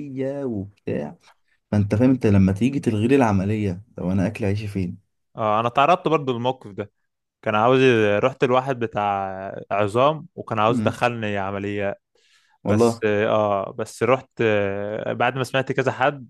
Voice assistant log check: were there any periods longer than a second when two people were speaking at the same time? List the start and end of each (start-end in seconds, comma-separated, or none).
none